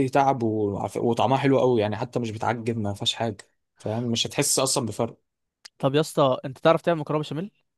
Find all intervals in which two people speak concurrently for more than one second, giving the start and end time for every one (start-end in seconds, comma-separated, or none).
none